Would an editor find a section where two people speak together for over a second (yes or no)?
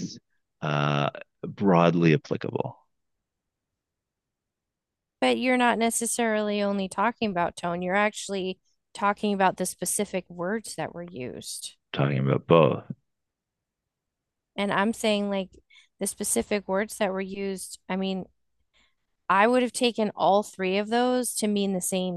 no